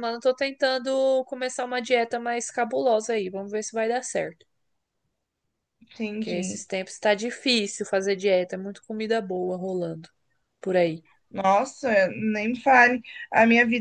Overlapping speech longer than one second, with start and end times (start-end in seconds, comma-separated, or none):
none